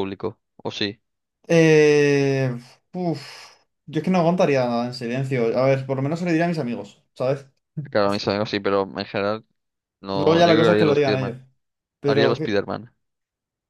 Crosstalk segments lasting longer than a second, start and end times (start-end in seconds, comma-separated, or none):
10.1-11.4